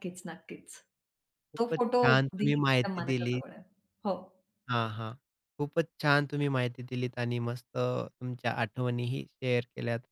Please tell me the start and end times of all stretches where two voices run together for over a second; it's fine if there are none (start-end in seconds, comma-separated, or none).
1.6-3.4